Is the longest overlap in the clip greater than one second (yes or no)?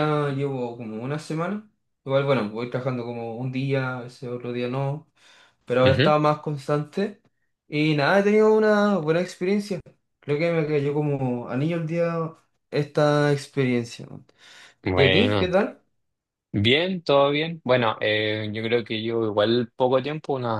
no